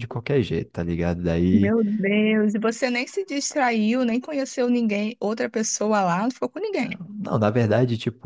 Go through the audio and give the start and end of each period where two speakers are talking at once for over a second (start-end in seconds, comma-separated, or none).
none